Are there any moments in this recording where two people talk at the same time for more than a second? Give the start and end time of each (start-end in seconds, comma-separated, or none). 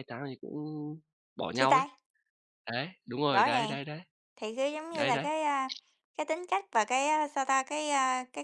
none